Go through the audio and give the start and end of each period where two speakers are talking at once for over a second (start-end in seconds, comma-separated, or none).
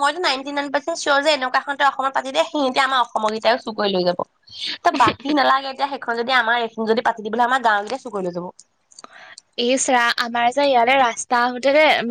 none